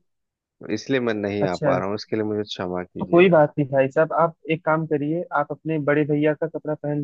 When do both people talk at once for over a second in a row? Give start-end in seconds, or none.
none